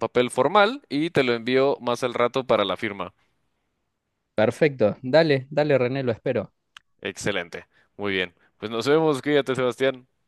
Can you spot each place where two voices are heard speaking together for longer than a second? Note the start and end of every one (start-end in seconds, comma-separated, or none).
none